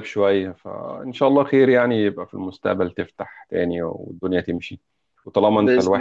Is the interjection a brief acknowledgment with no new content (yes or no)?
yes